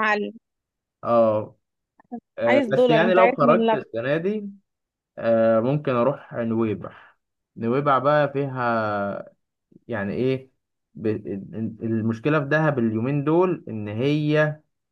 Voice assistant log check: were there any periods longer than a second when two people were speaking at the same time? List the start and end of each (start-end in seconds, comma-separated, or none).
2.5-3.8